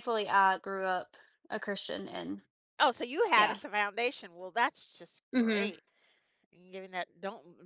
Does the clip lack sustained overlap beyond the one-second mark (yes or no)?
yes